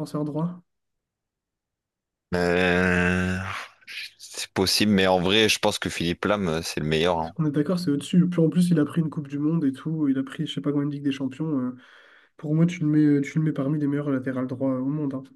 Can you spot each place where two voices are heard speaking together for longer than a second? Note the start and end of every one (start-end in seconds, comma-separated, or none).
none